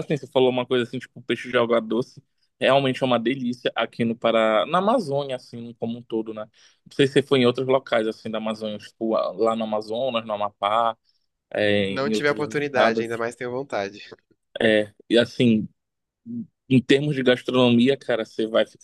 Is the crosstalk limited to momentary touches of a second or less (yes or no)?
no